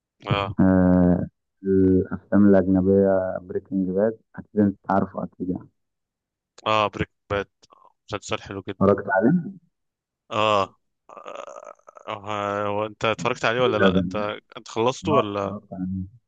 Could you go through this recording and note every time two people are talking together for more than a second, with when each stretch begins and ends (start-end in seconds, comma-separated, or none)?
none